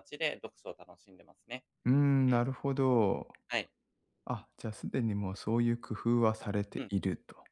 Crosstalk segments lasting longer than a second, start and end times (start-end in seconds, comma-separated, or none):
none